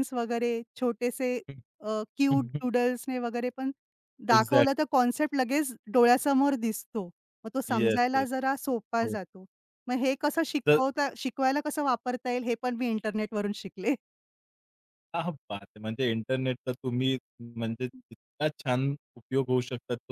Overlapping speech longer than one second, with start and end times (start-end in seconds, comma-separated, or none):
none